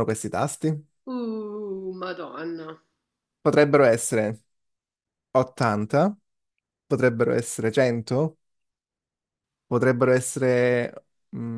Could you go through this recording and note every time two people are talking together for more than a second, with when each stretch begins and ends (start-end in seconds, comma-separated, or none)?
none